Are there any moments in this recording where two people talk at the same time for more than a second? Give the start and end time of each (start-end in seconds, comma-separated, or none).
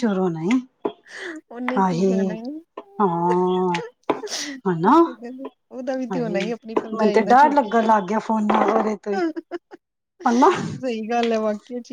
6.1-7.9